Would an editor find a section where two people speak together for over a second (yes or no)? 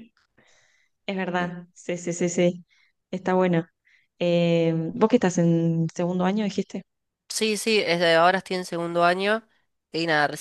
no